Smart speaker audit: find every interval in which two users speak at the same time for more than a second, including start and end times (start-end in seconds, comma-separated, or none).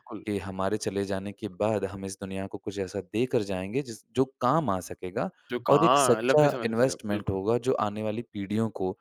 5.7-7.4